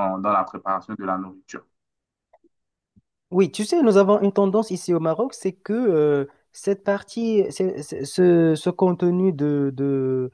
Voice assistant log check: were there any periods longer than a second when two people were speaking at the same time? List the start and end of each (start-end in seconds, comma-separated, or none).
none